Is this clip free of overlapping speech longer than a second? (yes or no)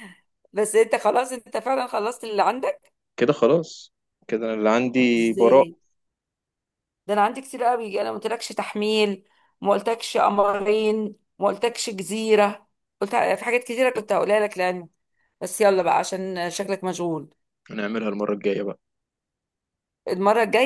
yes